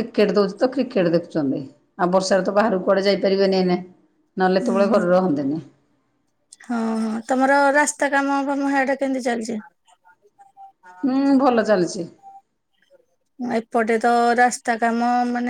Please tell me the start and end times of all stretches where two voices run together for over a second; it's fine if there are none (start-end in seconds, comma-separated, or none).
none